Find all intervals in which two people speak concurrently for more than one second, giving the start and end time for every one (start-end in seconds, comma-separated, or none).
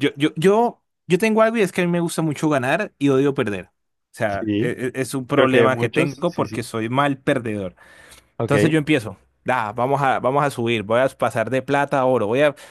5.3-6.6